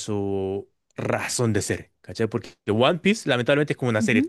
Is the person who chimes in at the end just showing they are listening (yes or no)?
yes